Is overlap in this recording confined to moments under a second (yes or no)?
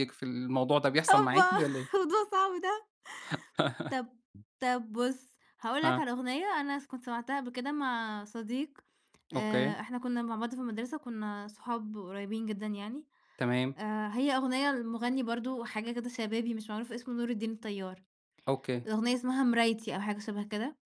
yes